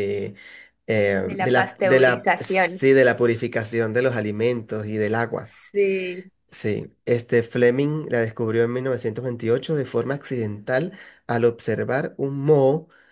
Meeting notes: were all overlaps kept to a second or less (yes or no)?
no